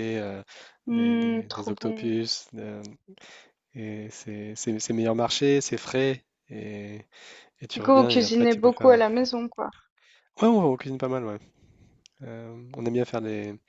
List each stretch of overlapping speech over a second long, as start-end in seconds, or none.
0.9-2.1, 7.7-9.0